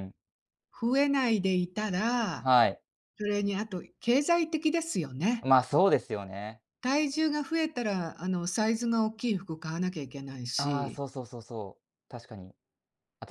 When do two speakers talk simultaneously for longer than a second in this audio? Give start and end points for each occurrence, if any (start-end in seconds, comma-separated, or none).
none